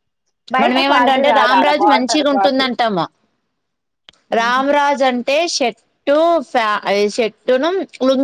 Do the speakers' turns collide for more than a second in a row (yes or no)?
yes